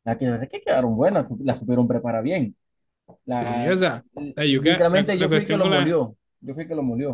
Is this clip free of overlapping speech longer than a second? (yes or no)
no